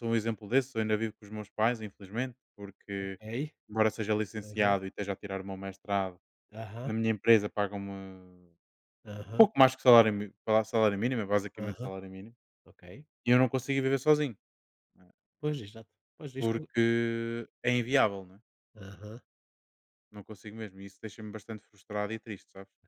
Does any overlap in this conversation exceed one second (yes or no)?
no